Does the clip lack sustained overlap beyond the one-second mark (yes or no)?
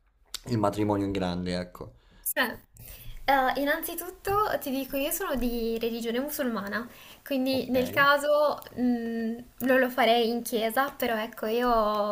yes